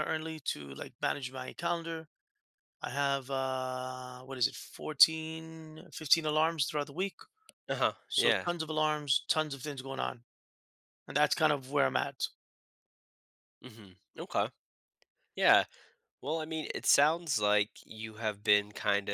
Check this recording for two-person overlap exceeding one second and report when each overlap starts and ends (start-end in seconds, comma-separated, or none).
none